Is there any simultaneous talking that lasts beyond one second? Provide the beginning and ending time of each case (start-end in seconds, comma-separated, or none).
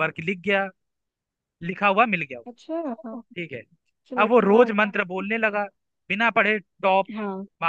none